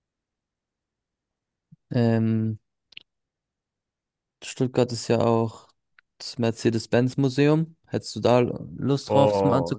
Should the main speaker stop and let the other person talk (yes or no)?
yes